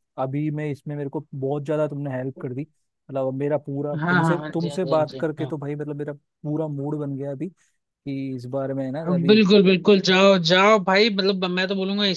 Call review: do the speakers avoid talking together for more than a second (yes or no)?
no